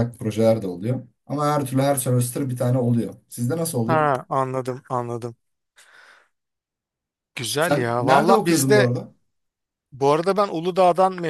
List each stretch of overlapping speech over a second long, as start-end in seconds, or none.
7.6-8.9